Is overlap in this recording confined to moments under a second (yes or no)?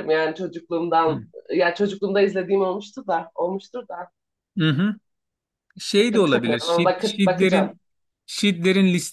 no